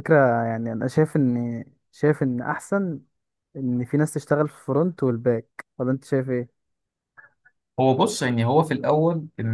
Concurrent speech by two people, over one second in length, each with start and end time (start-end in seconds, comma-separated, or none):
none